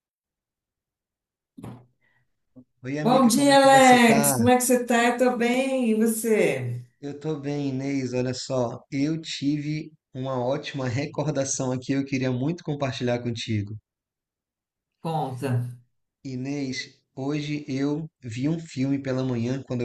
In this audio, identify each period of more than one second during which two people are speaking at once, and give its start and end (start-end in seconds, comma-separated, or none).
3.0-4.3